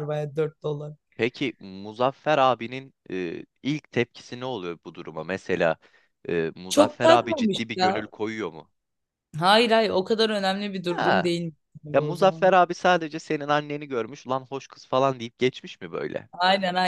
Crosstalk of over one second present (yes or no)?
yes